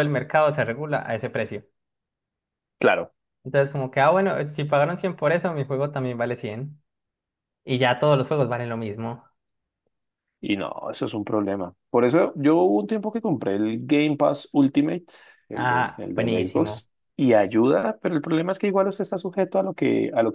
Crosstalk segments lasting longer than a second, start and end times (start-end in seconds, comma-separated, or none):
15.5-16.8